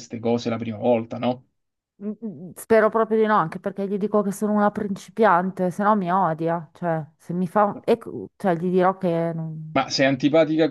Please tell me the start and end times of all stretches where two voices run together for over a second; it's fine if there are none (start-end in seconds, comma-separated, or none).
none